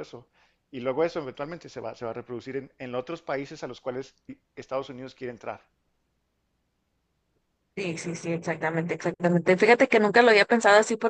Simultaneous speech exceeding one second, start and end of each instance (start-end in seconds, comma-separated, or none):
none